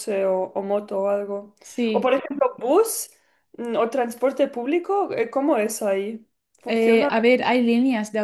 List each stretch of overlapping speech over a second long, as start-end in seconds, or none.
none